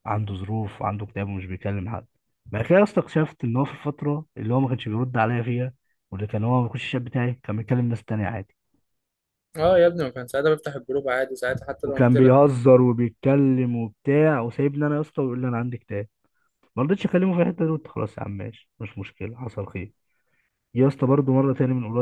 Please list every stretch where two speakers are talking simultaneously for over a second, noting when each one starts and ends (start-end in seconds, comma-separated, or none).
none